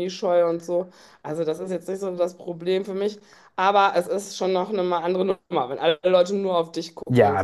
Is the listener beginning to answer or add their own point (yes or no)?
yes